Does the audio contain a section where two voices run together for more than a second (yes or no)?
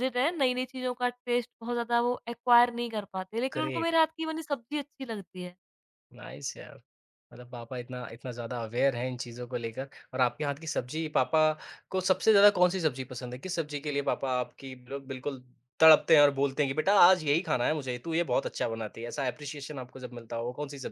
no